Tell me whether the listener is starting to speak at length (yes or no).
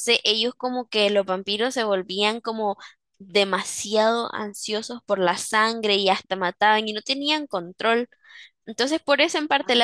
no